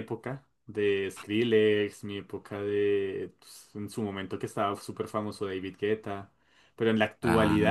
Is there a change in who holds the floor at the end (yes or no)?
no